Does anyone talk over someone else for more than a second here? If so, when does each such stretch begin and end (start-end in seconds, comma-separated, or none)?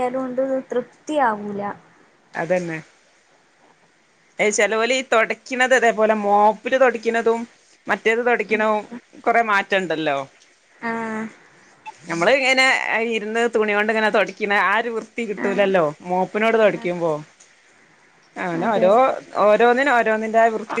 none